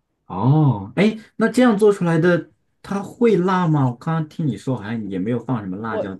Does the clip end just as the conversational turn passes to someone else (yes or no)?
yes